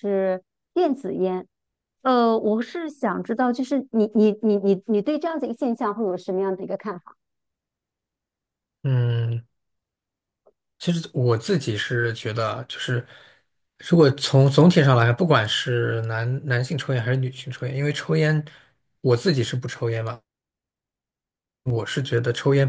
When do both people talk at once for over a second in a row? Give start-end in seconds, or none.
none